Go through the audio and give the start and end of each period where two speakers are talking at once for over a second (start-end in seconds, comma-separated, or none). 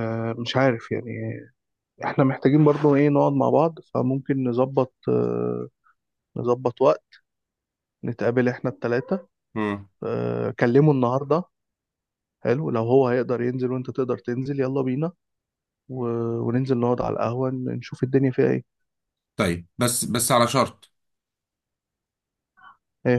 none